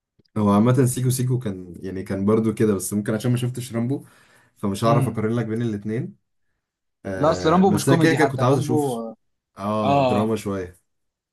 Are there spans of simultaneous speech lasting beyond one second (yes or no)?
yes